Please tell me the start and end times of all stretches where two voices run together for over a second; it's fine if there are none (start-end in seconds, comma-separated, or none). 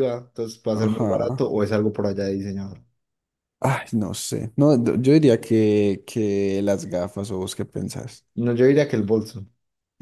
none